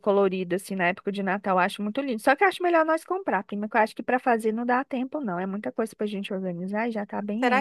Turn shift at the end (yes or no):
yes